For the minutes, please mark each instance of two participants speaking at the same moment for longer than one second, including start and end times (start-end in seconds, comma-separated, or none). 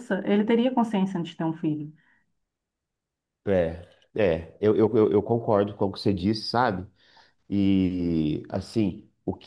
none